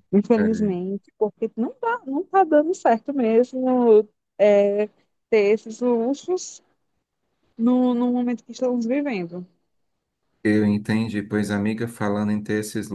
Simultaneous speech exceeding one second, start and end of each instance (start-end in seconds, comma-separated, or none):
none